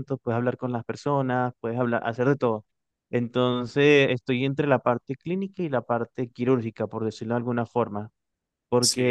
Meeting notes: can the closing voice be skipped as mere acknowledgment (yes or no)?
yes